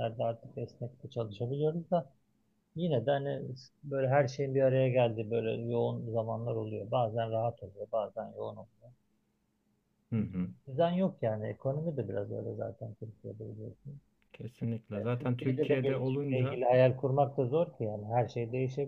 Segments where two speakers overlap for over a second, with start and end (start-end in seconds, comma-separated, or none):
14.9-16.6